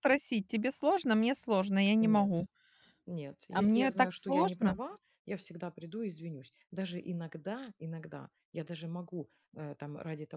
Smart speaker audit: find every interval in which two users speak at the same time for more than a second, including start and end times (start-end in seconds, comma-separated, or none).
3.5-4.8